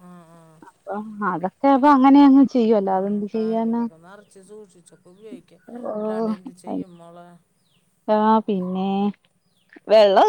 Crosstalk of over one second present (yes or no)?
no